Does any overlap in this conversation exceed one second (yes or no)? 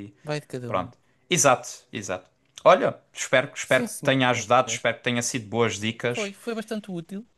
yes